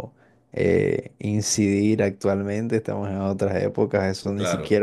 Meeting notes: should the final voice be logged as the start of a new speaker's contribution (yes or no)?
no